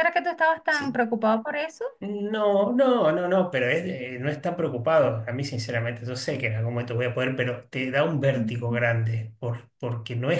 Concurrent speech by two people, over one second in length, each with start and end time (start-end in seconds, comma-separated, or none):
none